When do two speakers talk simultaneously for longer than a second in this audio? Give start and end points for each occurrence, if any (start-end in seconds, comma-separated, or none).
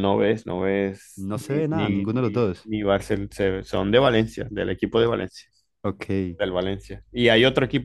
1.2-2.7